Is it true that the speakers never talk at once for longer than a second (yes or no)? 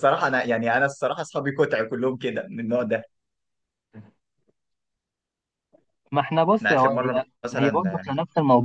no